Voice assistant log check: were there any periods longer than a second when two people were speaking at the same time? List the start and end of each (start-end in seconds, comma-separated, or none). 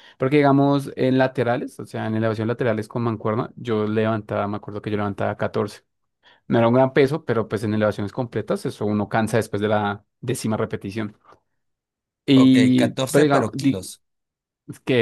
12.3-13.9